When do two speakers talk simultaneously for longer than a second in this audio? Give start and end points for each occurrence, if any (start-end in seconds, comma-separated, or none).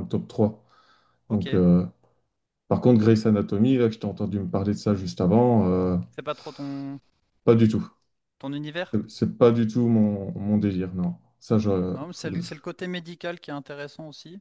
none